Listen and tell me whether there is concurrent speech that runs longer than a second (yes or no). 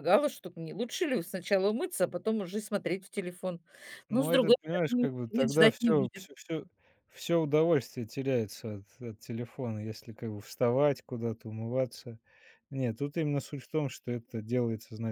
yes